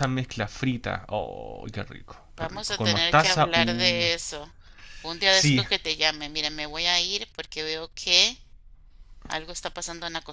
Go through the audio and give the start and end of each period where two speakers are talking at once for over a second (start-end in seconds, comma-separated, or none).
2.4-4.0